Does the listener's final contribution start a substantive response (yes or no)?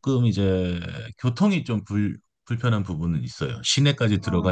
no